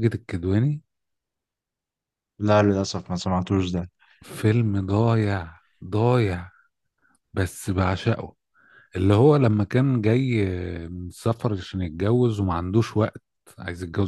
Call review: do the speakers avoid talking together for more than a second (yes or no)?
yes